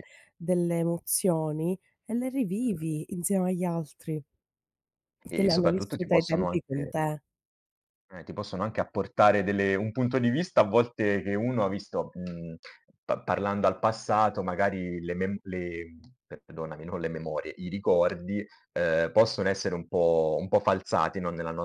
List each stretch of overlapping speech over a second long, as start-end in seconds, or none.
5.3-6.9